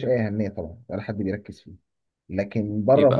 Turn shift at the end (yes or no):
no